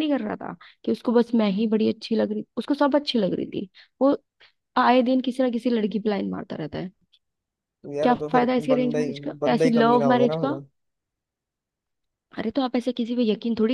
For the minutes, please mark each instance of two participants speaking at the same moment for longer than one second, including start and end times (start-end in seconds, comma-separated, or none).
8.0-10.5